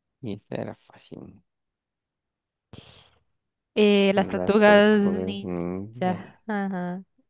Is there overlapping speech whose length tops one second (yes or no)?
yes